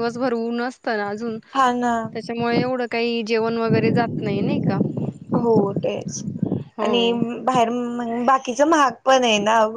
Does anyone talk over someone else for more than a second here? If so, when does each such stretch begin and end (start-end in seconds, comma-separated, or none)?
none